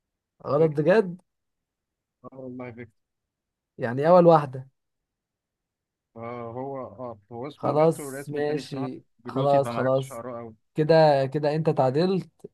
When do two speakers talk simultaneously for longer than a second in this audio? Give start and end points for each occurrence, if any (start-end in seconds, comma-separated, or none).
7.5-10.2